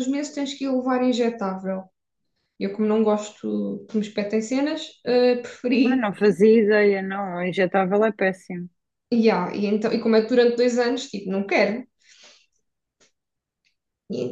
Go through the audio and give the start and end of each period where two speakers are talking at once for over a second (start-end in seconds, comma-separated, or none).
none